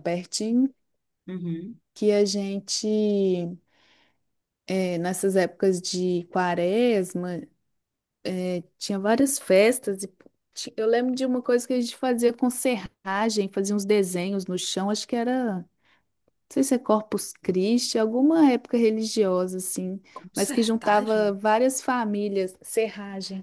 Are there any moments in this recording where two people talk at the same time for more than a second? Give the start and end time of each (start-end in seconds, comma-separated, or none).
20.1-21.4